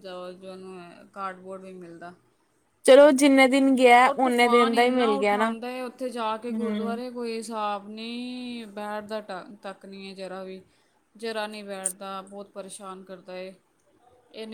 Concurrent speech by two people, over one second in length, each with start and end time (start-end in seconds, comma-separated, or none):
4.0-5.5